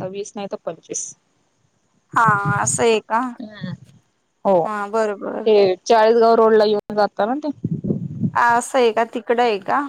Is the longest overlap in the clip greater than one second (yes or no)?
no